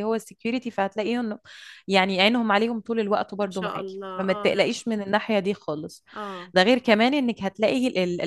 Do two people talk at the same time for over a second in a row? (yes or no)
yes